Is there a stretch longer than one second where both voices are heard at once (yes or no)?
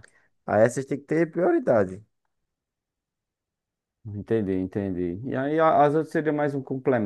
no